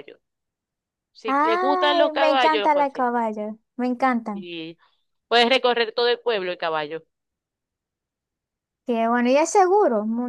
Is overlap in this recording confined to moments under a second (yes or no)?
no